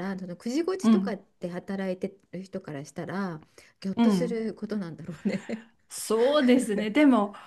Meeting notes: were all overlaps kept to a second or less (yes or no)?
yes